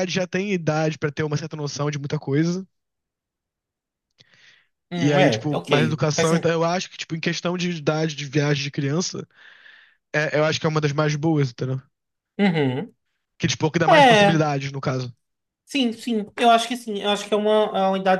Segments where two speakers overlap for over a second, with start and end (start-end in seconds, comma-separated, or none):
5.0-6.5